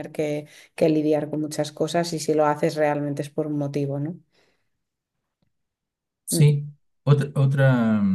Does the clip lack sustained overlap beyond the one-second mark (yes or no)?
yes